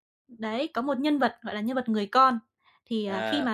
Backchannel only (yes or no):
yes